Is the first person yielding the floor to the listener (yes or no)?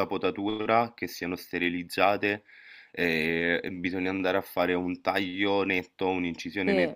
no